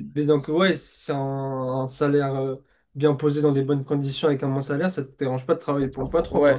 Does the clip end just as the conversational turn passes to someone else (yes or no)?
yes